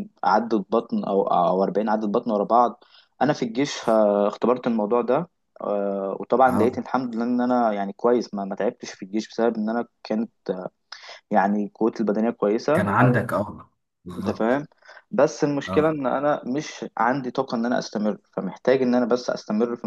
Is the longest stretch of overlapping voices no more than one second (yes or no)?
yes